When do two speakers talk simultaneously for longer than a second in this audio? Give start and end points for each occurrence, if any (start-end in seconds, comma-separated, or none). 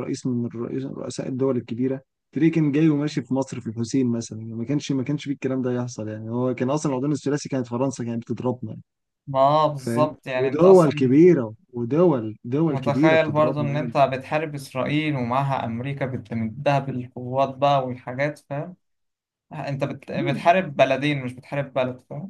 9.8-11.2, 12.7-13.9